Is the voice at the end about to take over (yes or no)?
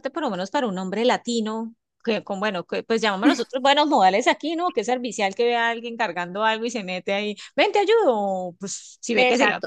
yes